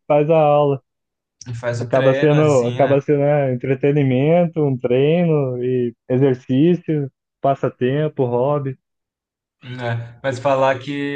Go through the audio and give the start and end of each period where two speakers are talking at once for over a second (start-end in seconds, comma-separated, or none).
1.8-3.0